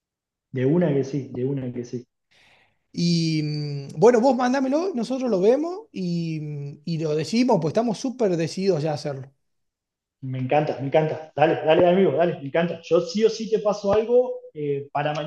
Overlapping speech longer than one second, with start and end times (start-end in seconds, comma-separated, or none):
none